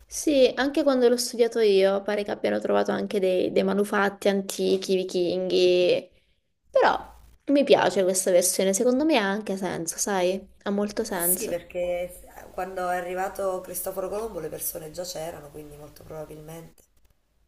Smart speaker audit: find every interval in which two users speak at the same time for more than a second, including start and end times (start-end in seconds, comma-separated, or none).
none